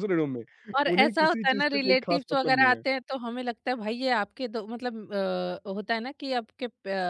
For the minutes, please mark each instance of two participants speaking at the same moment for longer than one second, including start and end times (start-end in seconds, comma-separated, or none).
0.9-2.8